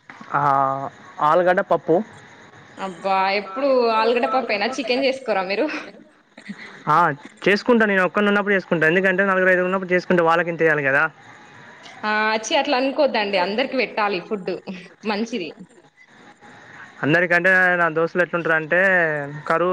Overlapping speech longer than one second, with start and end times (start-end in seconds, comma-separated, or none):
none